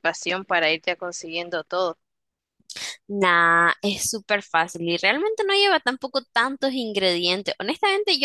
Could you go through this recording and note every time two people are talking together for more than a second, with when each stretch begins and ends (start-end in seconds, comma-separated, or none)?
none